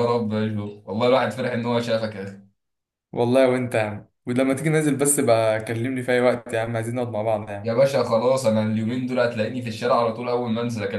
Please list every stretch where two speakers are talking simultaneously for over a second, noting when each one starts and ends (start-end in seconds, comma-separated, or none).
none